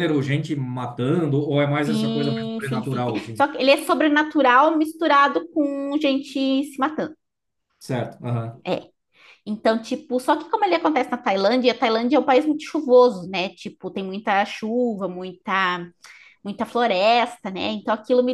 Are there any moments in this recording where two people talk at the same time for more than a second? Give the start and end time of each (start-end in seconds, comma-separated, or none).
1.8-3.4